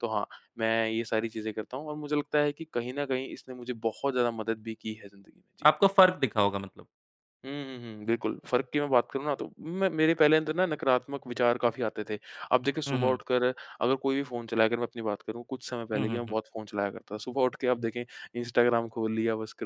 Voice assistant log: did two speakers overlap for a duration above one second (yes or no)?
no